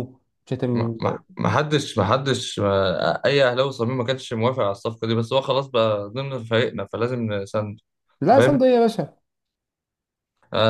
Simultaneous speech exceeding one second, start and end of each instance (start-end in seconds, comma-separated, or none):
none